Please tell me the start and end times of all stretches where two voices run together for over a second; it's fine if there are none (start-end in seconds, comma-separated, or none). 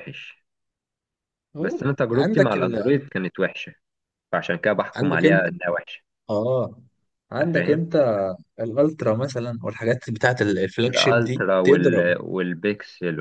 1.6-2.8, 10.9-12.2